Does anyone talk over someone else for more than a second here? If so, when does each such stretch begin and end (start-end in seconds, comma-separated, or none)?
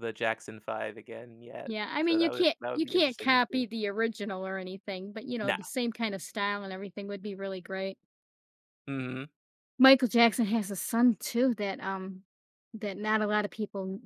1.6-3.6